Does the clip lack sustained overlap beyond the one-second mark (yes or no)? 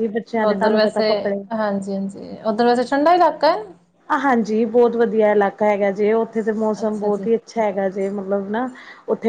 yes